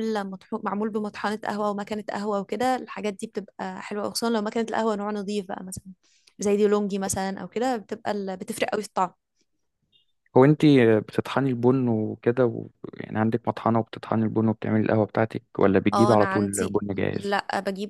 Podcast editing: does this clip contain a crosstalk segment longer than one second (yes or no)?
yes